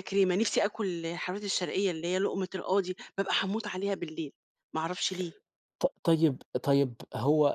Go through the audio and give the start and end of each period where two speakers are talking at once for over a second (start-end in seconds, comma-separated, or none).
none